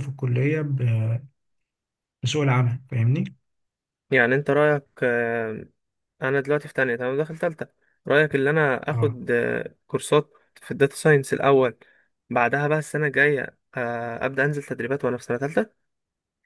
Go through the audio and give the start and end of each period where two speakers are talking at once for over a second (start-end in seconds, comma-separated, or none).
none